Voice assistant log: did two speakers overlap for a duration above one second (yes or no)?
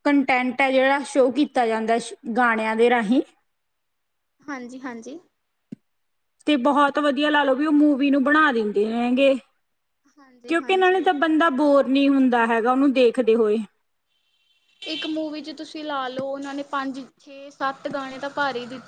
no